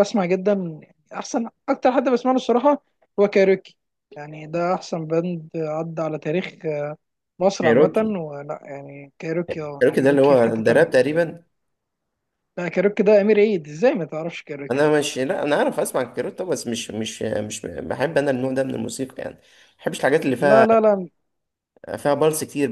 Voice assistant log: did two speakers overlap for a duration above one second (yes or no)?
yes